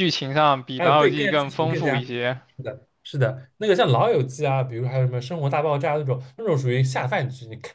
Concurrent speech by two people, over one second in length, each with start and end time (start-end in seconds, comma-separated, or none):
0.8-2.0